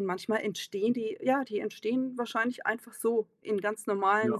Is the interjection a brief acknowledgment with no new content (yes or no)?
yes